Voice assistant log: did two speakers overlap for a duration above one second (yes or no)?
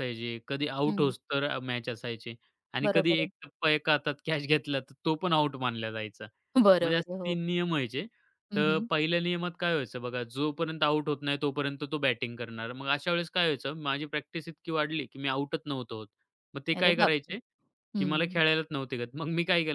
no